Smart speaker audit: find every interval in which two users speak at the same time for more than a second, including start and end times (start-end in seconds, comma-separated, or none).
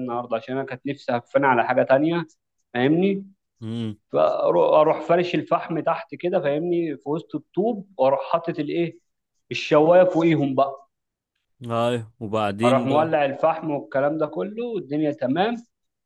none